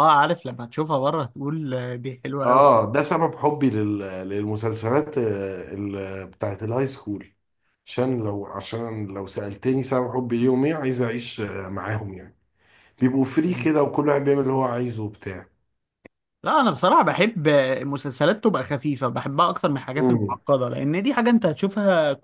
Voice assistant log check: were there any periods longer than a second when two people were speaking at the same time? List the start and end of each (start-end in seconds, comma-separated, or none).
none